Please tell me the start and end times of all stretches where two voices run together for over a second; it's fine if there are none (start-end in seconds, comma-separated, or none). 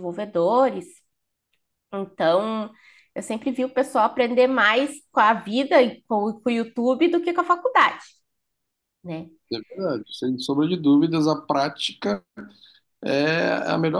none